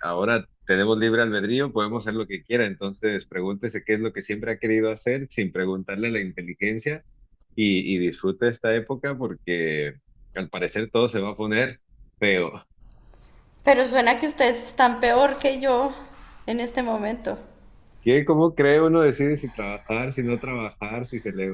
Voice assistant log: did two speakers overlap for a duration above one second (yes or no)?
no